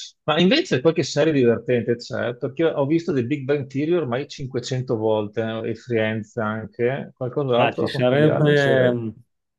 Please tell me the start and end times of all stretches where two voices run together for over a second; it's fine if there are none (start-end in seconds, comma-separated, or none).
7.6-8.9